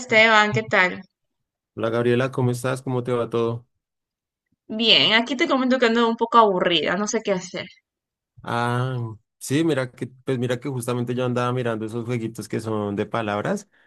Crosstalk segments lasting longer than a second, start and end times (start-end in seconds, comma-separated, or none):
none